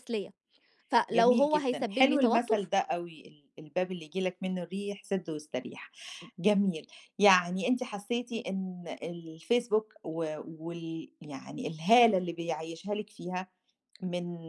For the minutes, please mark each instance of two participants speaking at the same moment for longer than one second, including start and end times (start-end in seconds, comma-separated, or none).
1.1-2.7